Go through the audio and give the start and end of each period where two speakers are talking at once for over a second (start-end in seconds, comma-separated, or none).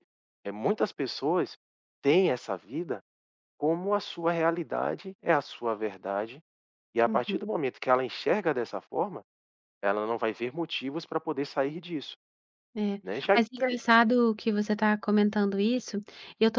none